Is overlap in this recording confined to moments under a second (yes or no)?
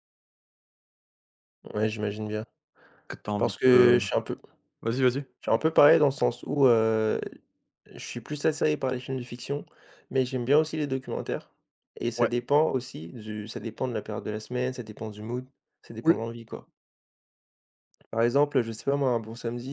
yes